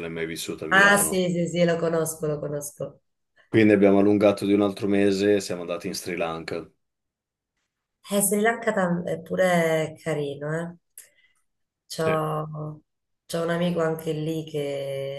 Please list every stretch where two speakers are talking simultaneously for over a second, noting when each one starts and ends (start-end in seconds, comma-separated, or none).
none